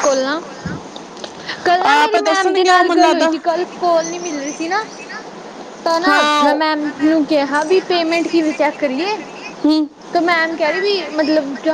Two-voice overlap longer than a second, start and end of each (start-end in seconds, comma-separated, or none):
1.9-3.3